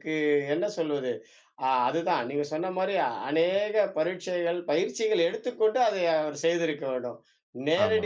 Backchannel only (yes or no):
yes